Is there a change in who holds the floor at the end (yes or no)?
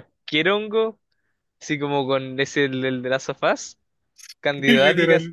no